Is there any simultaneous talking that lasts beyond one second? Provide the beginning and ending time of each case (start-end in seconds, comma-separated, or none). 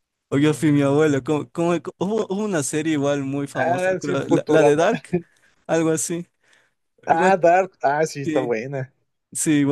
3.6-4.8